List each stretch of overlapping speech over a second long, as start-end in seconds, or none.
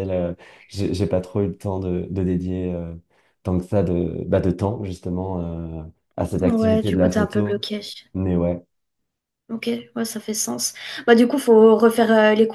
6.4-7.7